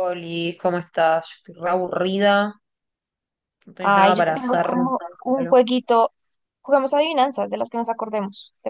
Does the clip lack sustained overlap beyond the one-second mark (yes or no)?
no